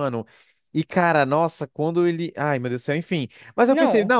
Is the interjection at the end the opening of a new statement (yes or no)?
no